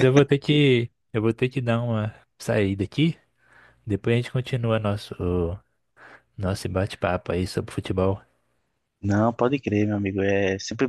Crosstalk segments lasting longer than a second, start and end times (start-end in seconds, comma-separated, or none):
none